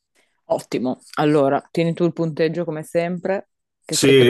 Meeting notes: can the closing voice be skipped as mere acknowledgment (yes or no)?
no